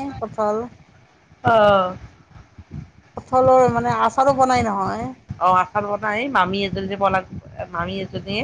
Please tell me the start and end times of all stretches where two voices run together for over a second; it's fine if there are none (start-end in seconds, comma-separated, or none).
none